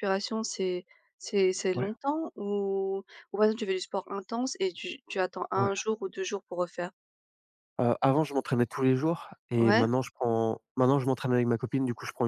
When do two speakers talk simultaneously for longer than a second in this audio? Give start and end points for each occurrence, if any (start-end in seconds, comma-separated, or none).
none